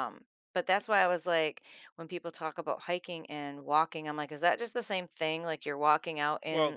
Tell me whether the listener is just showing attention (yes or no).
yes